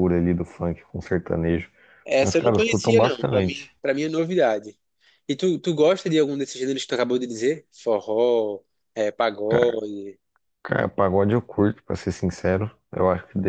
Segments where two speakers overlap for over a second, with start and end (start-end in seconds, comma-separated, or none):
2.2-3.7